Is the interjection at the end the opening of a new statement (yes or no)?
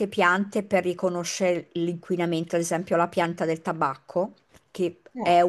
no